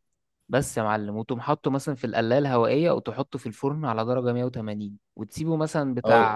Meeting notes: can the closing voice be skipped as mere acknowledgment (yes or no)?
yes